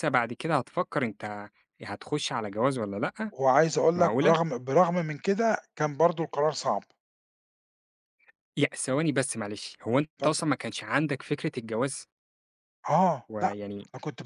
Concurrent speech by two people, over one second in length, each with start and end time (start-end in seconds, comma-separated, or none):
none